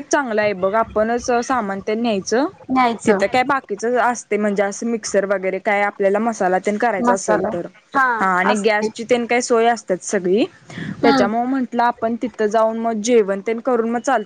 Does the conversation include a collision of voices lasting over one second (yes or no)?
no